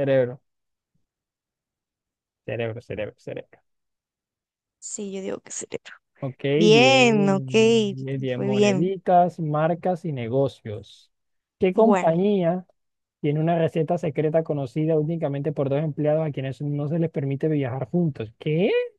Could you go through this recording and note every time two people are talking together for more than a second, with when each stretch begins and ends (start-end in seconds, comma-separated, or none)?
none